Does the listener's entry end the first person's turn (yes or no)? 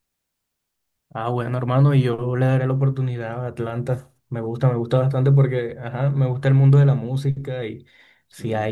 no